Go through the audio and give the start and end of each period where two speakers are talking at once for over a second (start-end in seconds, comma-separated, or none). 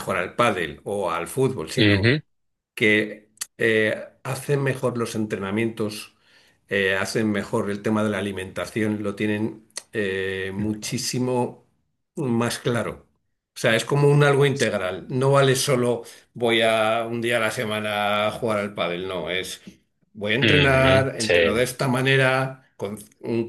20.4-21.6